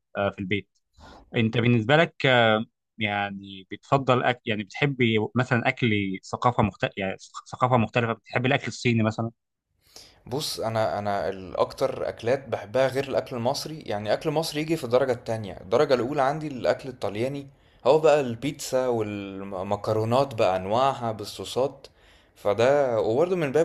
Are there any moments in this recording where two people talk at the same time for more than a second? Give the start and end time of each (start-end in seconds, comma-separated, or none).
none